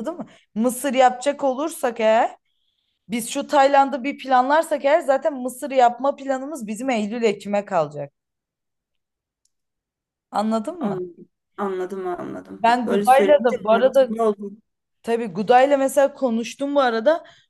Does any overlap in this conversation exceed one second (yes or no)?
yes